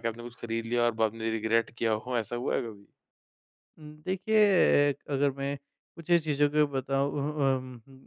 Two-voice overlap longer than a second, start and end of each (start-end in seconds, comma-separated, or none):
none